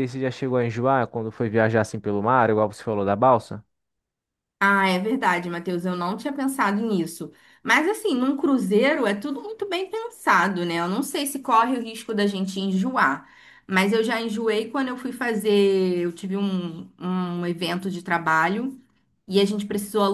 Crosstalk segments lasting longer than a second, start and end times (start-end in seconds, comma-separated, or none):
none